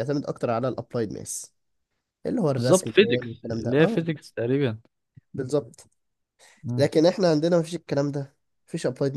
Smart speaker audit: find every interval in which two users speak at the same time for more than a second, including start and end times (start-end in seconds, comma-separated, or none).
2.5-4.1